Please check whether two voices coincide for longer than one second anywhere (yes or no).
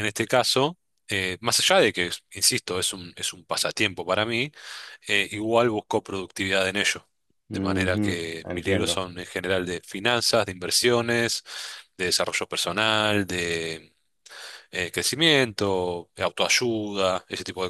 yes